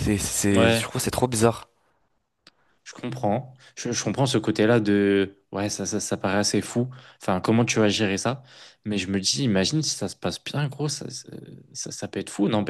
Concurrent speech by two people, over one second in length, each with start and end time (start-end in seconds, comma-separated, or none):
none